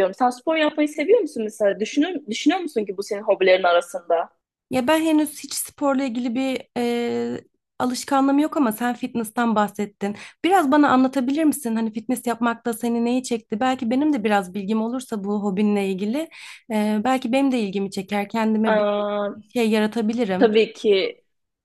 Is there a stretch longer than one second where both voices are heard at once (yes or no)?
no